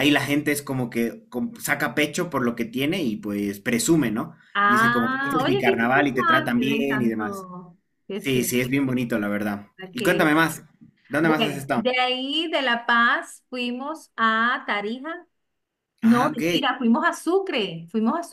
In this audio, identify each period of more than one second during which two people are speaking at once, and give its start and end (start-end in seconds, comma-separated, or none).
4.5-7.5